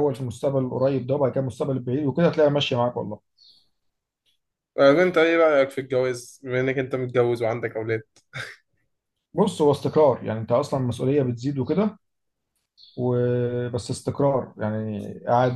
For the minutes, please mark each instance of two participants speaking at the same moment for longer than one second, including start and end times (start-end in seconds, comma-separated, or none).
none